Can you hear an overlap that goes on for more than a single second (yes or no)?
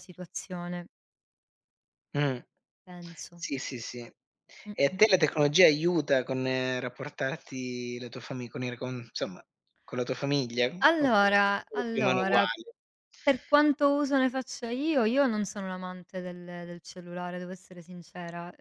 yes